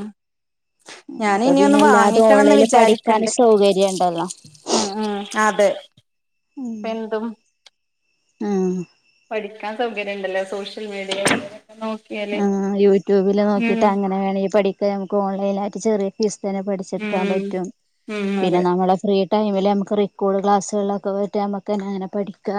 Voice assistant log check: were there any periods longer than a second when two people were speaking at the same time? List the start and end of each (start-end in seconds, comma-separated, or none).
1.4-3.3